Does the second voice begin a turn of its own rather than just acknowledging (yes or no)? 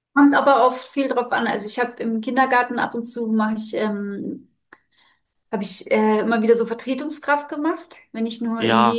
yes